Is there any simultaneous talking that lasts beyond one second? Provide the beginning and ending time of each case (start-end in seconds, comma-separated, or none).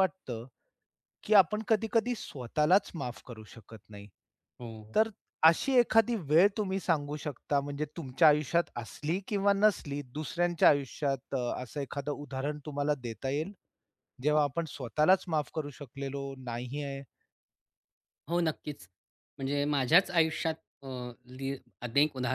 none